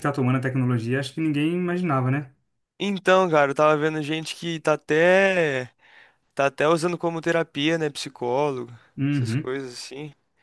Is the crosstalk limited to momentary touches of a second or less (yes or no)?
yes